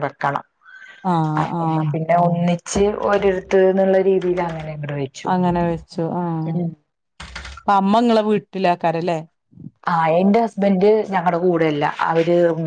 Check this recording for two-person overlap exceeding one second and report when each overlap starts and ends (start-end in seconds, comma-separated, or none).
none